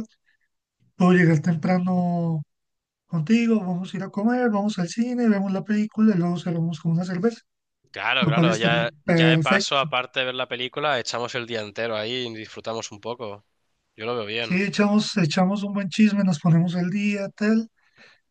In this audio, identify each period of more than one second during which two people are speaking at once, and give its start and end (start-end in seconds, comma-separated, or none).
8.2-9.9